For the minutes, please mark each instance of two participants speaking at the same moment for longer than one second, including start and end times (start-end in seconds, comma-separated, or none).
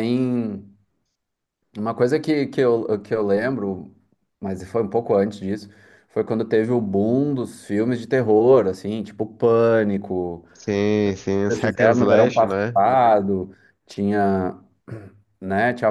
11.5-12.8